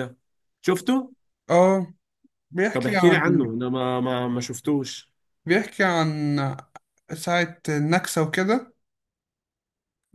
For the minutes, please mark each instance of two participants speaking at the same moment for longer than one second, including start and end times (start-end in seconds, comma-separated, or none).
none